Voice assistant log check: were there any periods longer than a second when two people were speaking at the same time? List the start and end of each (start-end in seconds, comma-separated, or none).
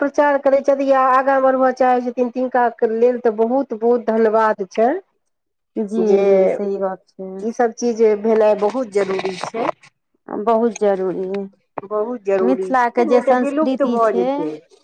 12.5-14.2